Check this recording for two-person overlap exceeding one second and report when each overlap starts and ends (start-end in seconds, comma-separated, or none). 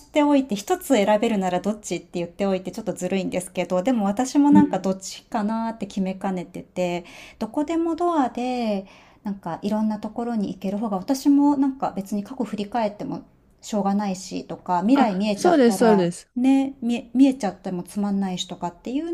14.9-16.3